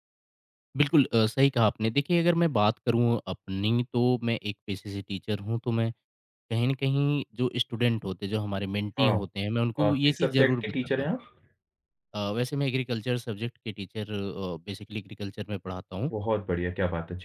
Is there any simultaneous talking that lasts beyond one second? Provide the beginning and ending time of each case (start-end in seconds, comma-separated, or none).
9.8-11.1